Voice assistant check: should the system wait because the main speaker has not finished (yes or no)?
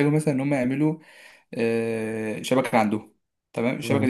yes